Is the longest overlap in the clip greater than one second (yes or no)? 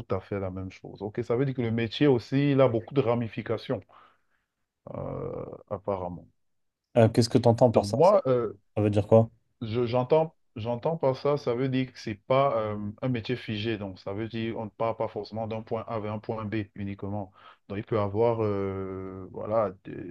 no